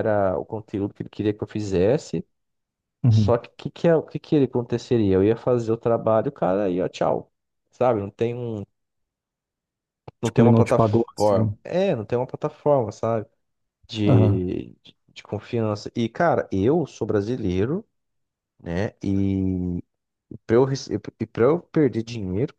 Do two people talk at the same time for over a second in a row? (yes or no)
yes